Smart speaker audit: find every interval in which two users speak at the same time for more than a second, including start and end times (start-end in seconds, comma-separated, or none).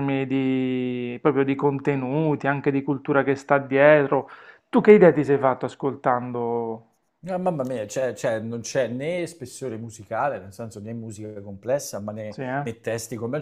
none